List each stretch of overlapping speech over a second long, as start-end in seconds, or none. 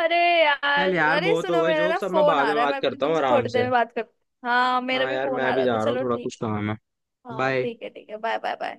0.8-3.7, 4.9-6.3